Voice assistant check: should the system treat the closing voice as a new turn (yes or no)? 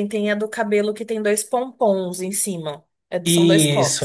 yes